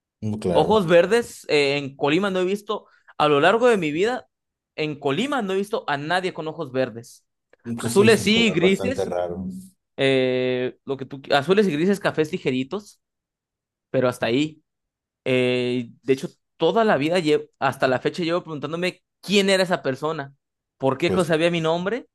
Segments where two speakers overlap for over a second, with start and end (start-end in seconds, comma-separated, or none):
7.8-9.1